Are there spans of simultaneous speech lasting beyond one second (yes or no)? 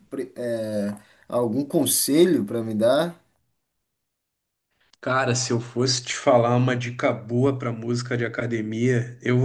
no